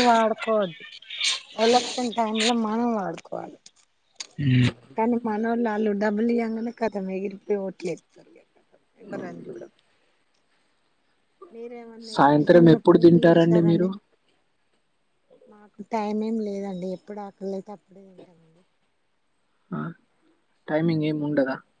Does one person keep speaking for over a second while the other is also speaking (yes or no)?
yes